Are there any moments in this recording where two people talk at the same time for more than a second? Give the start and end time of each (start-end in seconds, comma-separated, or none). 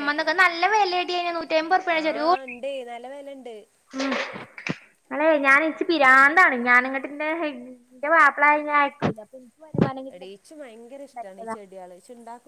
10.1-11.6